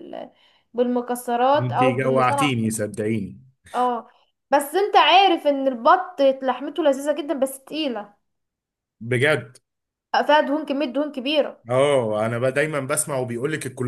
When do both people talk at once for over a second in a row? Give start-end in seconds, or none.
1.6-2.8